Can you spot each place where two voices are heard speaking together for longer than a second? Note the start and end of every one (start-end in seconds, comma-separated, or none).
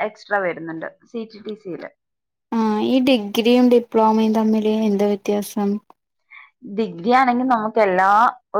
none